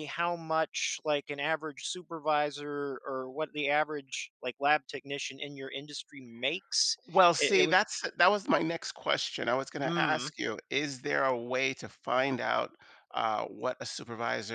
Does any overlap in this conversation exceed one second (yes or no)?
no